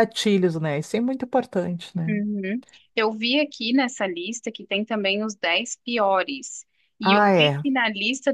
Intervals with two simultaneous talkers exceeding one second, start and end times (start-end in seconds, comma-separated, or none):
none